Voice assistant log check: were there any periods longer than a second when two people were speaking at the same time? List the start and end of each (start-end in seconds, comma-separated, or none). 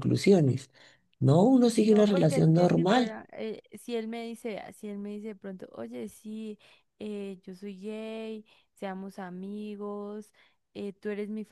1.9-3.2